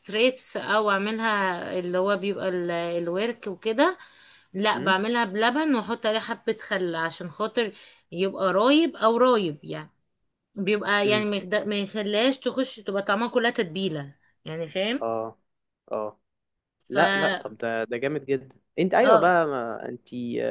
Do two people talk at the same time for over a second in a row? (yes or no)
no